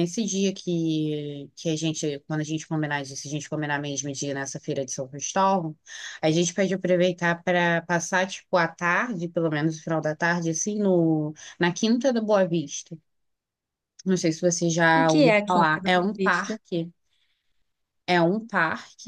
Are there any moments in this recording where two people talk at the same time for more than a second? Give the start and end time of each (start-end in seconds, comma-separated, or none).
14.9-16.6